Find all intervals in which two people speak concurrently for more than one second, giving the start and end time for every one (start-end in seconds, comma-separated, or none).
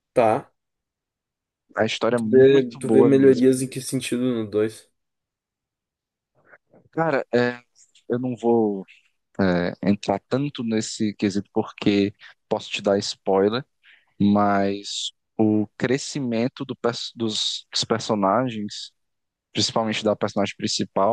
2.2-3.5